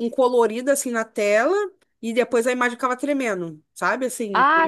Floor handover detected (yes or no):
yes